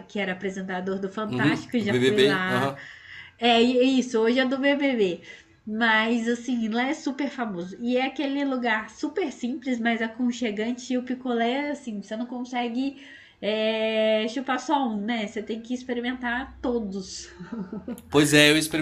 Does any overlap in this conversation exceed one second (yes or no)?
yes